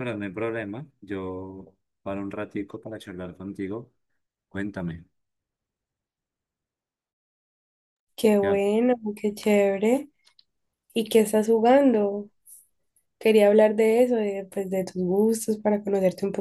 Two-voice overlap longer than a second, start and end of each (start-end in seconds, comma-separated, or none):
none